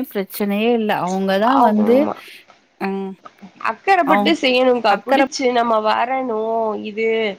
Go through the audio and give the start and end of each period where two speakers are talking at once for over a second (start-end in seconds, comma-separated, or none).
none